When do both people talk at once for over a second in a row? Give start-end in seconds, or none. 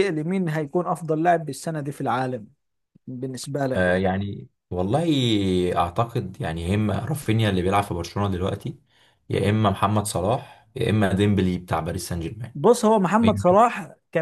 none